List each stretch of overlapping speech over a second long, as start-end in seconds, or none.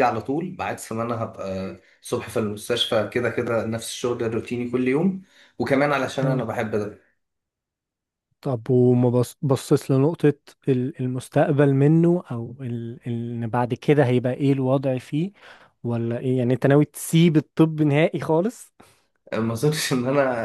none